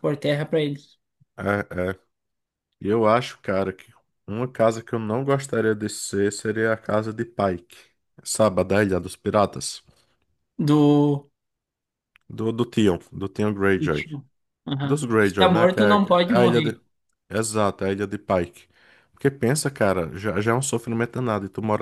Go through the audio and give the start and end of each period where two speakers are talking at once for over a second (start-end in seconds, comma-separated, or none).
14.8-16.7